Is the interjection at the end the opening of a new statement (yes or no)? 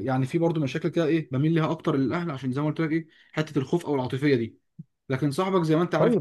no